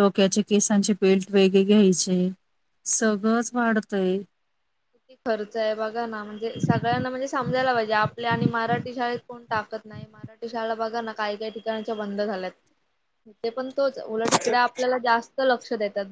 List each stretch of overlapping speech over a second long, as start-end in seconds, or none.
none